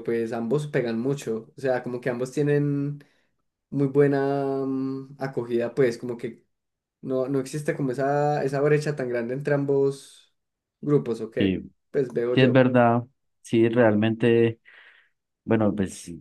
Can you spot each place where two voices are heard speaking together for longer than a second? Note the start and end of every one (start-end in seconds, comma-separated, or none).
none